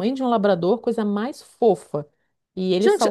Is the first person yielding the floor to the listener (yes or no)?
yes